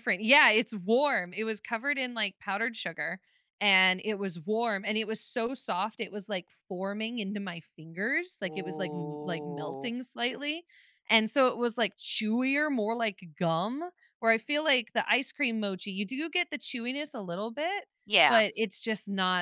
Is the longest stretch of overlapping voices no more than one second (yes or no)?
no